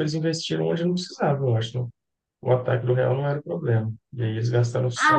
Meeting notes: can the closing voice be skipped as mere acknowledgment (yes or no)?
no